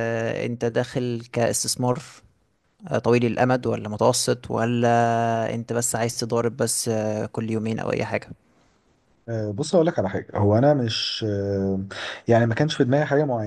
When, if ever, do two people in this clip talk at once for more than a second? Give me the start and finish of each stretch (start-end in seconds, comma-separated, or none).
none